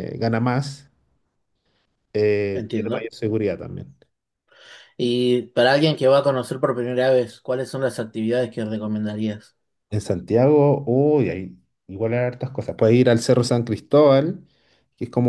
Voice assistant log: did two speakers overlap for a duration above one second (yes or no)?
no